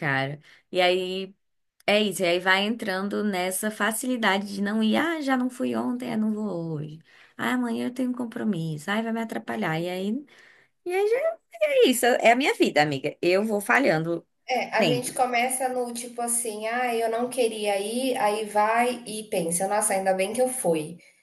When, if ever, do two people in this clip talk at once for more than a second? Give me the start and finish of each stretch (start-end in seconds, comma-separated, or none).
none